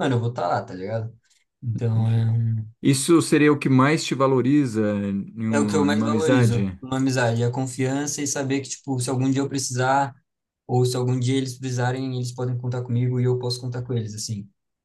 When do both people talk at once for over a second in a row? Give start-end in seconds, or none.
5.5-6.8